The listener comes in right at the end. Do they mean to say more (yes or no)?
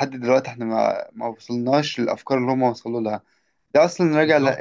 no